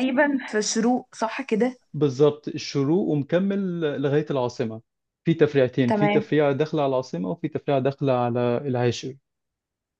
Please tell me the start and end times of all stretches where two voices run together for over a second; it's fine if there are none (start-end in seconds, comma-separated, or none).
none